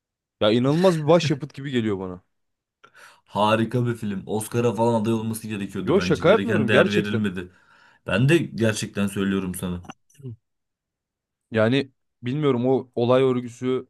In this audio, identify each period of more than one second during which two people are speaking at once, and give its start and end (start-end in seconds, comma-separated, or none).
5.8-7.2